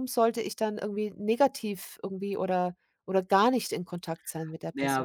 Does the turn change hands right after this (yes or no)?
yes